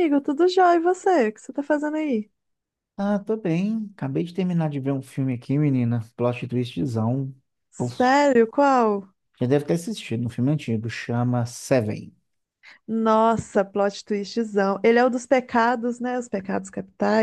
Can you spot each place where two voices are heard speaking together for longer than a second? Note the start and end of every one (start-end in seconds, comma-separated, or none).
none